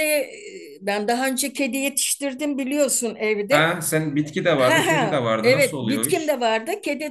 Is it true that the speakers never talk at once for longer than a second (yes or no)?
no